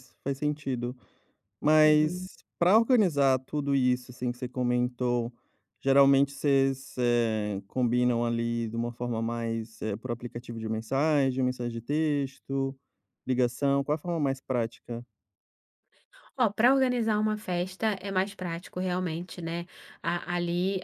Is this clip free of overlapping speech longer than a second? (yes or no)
yes